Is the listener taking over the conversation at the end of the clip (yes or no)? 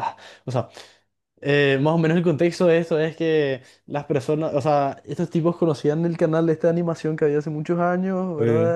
no